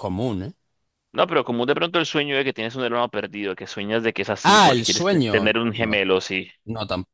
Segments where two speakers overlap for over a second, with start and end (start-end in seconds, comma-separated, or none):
4.4-6.0